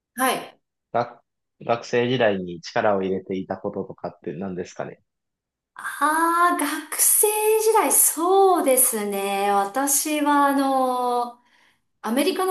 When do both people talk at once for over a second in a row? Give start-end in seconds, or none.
none